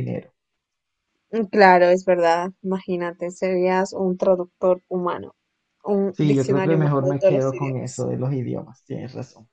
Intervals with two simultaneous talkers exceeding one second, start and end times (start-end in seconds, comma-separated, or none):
6.1-8.1